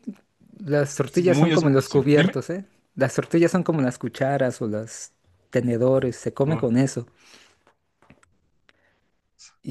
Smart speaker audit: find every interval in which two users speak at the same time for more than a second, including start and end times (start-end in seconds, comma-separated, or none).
1.0-2.4